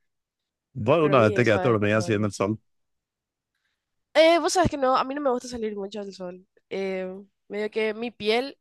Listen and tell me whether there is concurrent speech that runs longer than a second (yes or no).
yes